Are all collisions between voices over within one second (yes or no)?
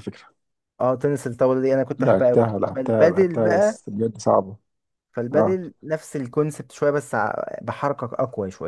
no